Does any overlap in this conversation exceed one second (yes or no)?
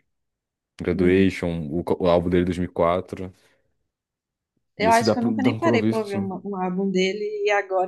yes